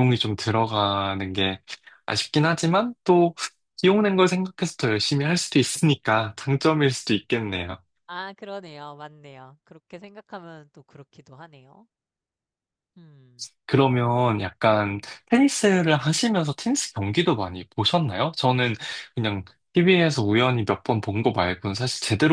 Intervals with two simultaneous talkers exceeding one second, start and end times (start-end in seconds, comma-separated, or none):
none